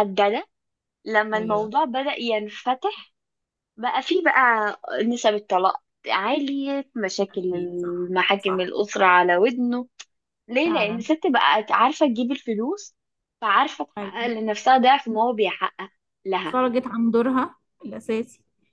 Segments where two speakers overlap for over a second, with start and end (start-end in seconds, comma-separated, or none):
7.3-8.7